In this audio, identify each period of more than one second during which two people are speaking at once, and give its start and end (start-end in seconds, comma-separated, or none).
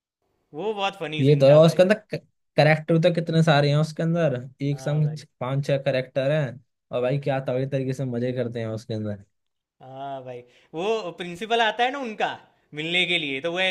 none